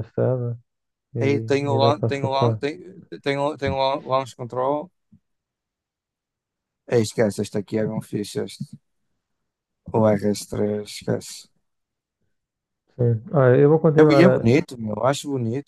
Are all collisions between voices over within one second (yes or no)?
no